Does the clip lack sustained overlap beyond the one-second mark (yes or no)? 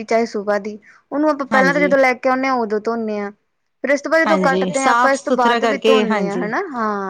no